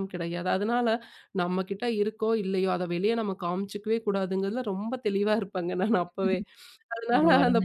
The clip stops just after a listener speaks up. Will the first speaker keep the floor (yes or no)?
yes